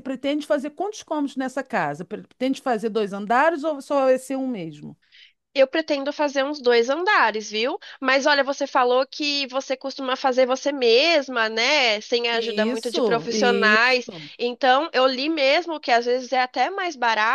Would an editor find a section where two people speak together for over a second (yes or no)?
yes